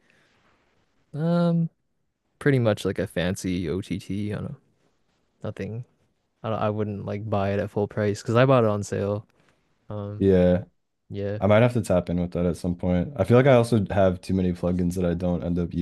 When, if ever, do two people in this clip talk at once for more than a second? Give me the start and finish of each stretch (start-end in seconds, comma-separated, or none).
none